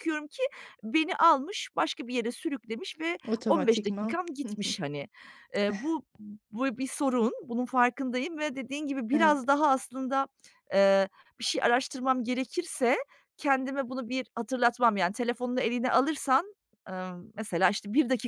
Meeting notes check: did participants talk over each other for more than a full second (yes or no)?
yes